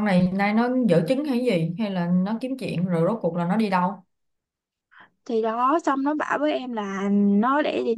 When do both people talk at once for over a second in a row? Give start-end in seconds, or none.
none